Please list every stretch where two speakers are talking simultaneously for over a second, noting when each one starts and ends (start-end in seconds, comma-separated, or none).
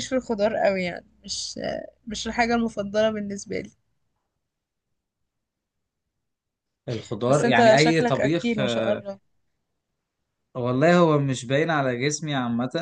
7.3-8.6